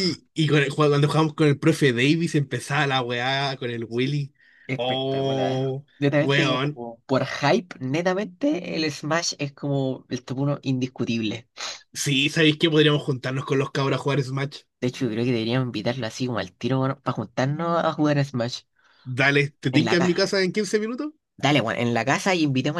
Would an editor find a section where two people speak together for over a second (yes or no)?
yes